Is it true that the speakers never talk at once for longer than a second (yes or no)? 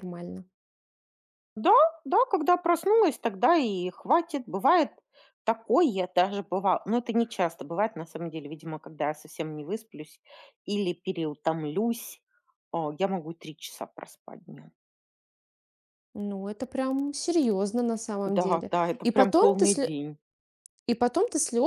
no